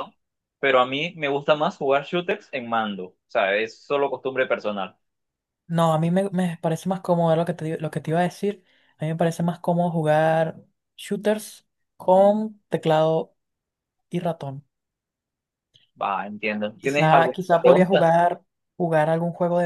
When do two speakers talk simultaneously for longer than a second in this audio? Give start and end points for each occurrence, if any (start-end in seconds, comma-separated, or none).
16.8-18.1